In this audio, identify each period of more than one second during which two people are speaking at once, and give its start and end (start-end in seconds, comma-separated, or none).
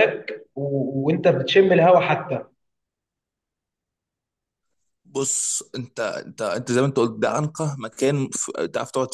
none